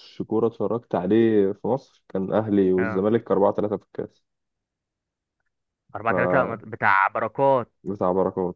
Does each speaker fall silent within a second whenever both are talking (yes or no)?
yes